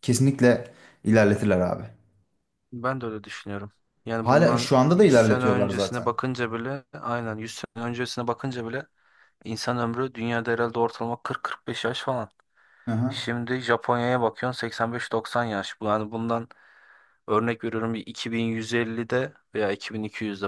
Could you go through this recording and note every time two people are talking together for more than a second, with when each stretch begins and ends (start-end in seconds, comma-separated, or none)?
4.2-6.1